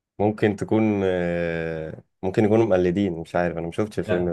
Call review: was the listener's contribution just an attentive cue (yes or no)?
no